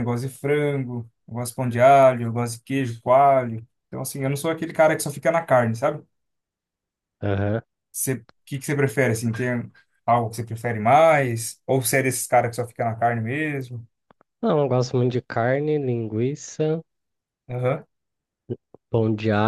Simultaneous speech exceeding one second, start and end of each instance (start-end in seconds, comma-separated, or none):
none